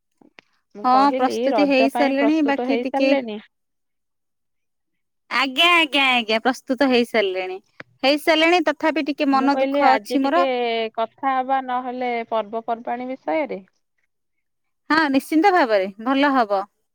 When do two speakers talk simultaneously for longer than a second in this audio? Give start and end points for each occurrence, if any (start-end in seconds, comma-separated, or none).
0.8-3.1